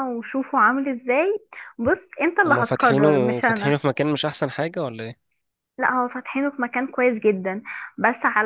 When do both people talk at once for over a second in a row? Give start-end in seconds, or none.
2.5-3.8